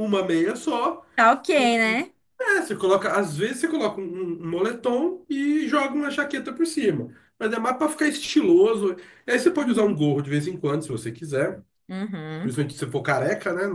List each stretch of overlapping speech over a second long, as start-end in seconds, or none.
none